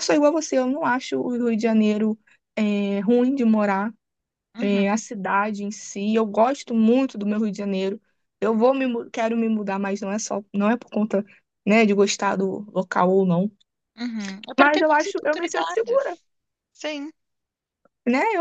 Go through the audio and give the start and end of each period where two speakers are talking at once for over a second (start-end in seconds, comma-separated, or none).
14.6-16.2